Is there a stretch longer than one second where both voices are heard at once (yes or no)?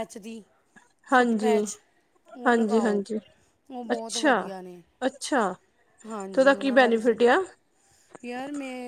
yes